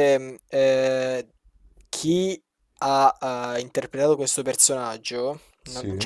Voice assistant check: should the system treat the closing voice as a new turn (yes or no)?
no